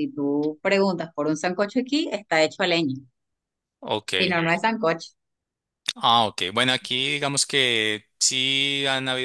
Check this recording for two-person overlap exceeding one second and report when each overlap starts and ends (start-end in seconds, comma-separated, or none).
none